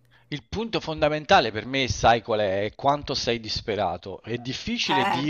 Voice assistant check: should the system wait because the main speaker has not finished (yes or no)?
yes